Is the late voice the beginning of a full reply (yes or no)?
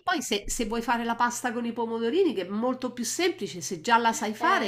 yes